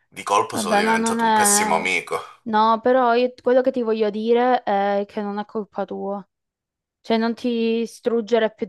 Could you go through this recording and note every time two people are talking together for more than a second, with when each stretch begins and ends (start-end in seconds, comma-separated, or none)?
0.5-1.9